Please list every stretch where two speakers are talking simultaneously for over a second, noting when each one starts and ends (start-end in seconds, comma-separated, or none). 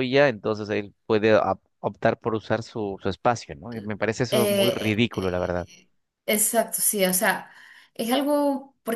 4.3-5.7